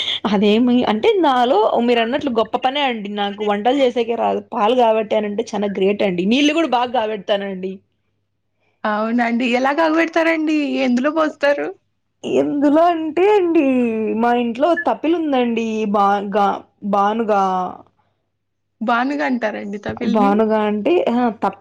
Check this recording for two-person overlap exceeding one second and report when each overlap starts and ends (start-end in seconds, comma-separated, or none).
none